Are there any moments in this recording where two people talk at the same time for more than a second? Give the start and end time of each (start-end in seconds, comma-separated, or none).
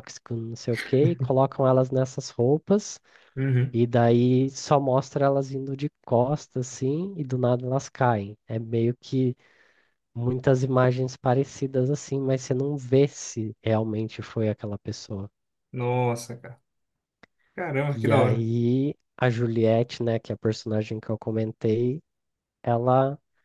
none